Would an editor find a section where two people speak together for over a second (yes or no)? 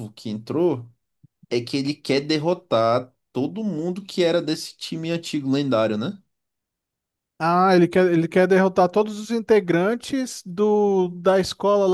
no